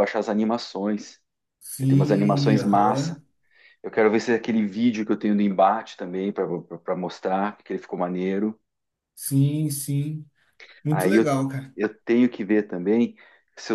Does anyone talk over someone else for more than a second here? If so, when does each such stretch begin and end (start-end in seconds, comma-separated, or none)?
1.8-3.2